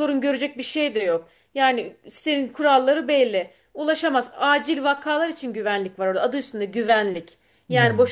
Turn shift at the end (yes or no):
no